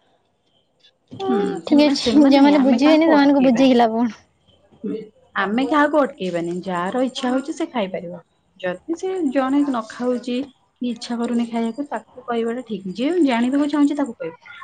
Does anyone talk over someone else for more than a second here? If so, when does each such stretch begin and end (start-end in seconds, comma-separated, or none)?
1.7-3.7